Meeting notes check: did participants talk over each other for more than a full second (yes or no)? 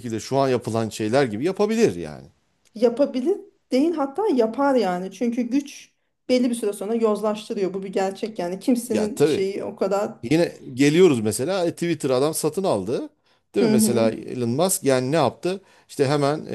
no